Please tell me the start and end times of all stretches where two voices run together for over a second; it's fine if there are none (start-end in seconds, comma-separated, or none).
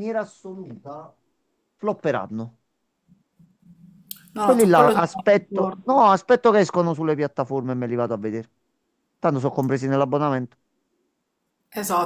4.4-6.1